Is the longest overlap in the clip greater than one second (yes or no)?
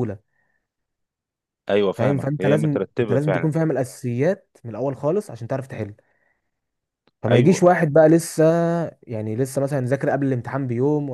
yes